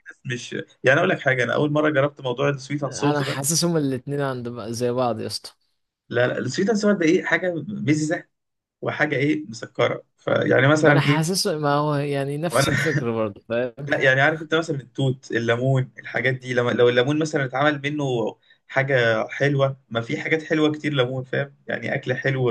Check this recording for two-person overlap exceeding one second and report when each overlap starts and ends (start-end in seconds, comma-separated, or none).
none